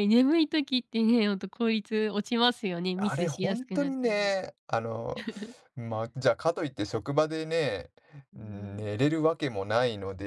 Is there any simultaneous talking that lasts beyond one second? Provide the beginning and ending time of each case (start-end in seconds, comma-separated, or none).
2.9-4.3